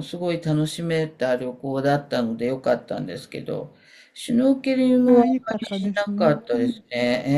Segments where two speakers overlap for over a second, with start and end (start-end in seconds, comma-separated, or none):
5.0-6.8